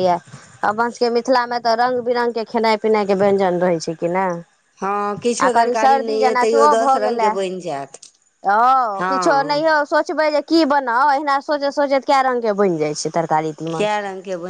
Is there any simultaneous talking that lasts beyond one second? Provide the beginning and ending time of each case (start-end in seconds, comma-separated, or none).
5.5-7.3